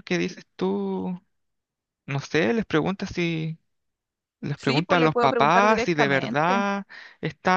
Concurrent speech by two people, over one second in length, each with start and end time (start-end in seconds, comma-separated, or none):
4.5-6.7